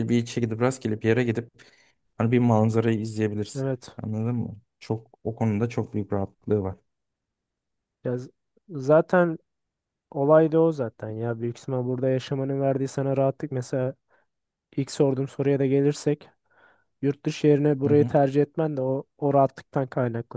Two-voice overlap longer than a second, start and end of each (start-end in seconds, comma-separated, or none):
none